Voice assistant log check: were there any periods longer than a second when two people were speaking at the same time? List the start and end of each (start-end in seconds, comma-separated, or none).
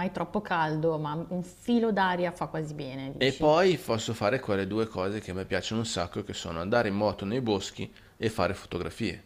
none